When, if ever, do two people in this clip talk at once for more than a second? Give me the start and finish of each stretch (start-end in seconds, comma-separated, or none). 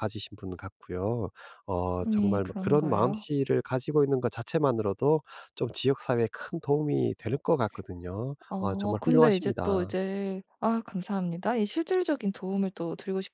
2.0-3.2, 8.5-9.9